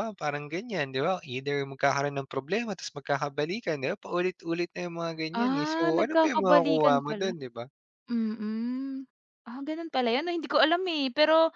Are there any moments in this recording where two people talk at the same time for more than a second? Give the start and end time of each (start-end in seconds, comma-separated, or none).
5.3-7.3